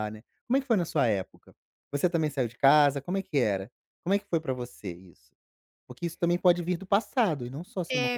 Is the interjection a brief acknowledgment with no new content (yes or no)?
no